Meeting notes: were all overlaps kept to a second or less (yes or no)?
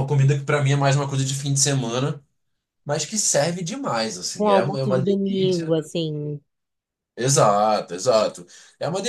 no